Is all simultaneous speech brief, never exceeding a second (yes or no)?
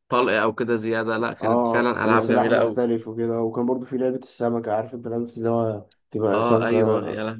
no